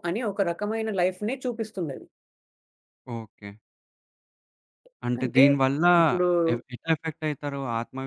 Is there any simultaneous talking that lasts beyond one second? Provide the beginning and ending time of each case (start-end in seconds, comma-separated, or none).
none